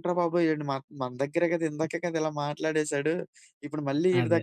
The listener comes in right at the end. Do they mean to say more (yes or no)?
no